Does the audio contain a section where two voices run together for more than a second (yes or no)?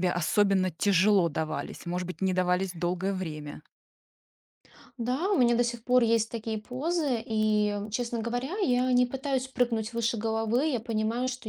no